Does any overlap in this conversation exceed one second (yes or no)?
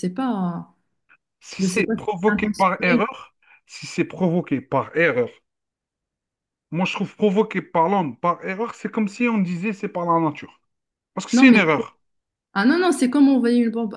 yes